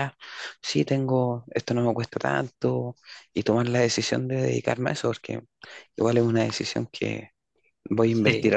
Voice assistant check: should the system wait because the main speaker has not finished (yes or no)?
yes